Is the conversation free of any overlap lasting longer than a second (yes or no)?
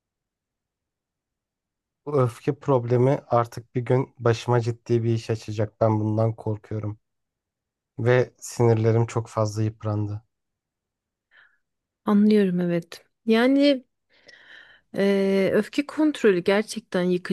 yes